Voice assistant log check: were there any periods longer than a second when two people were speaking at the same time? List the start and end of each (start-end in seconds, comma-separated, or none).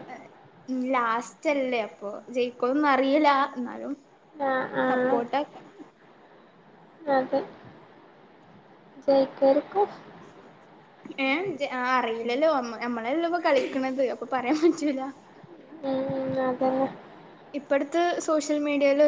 none